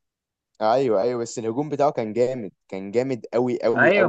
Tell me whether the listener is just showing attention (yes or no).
no